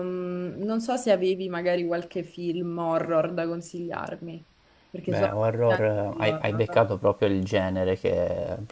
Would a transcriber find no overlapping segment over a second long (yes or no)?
no